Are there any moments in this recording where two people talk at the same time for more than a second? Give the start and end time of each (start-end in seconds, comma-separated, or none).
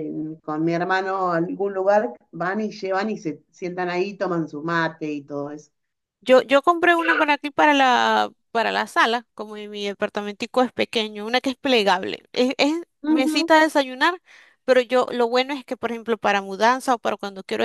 none